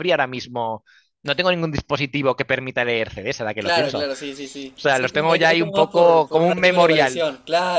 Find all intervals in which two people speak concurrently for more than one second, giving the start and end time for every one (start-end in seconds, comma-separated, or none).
3.6-7.2